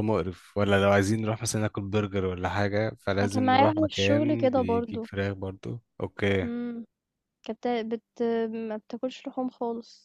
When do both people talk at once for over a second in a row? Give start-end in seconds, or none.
3.2-5.1